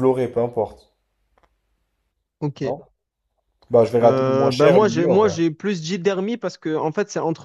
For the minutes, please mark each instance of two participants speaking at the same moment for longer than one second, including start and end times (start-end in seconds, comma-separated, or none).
4.0-5.3